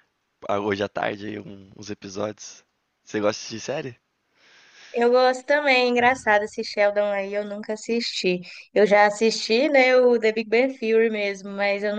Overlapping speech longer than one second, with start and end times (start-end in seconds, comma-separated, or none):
none